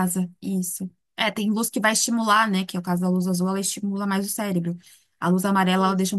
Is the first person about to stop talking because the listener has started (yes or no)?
no